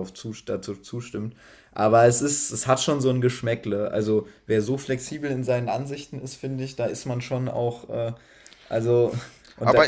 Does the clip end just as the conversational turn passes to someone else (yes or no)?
yes